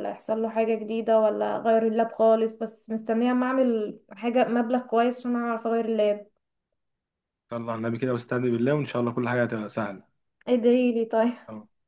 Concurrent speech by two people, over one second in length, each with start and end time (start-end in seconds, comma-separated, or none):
none